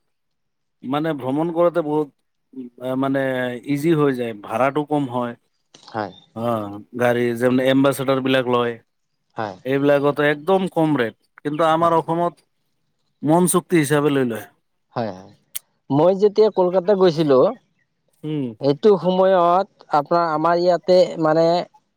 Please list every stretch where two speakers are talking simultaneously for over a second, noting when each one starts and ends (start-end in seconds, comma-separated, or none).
none